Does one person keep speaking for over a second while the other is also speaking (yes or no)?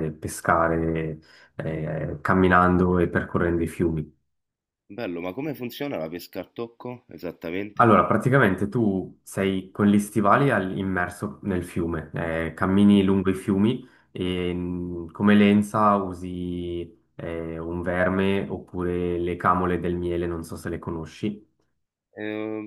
no